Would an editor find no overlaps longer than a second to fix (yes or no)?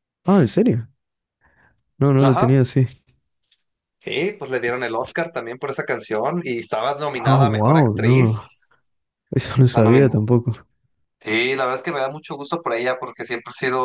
no